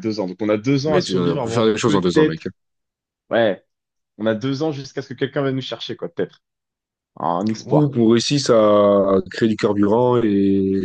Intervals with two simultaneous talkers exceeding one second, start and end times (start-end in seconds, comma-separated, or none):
0.8-2.4